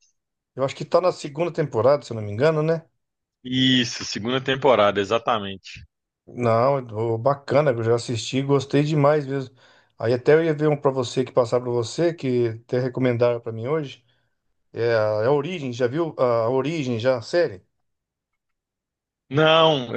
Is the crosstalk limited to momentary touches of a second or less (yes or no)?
yes